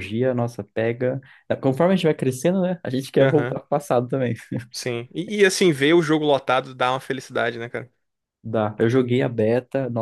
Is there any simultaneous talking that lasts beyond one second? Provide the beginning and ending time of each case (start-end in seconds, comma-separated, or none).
none